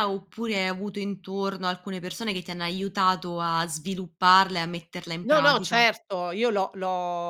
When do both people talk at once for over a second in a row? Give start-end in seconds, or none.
none